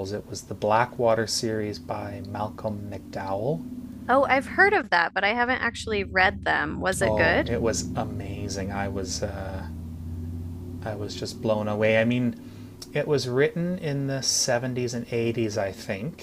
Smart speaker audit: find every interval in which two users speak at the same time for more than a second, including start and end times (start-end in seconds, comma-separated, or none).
none